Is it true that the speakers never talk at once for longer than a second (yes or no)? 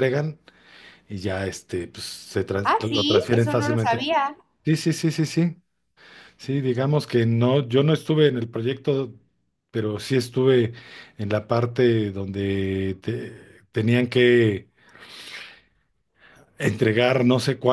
no